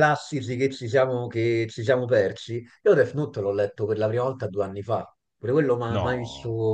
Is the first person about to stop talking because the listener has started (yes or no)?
no